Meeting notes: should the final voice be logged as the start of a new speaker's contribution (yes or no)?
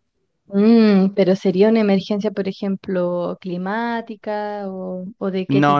yes